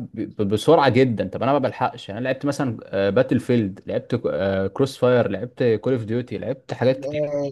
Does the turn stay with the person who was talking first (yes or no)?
no